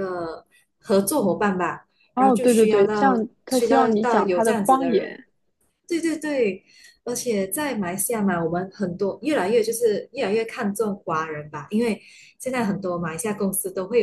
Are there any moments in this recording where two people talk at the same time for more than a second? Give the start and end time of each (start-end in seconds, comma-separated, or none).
2.1-5.2